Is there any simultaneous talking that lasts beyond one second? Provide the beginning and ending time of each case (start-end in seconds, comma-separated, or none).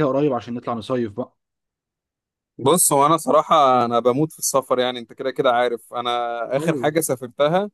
none